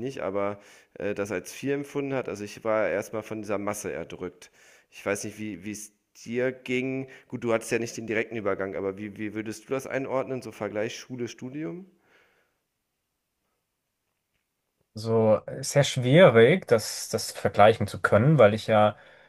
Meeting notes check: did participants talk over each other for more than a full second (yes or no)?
no